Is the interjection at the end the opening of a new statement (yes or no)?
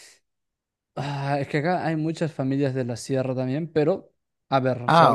no